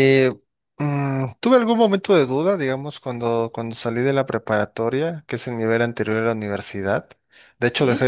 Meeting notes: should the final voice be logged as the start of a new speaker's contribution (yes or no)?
no